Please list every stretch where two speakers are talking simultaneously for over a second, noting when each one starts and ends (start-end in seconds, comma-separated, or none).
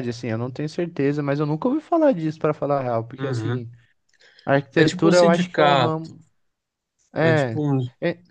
4.8-6.2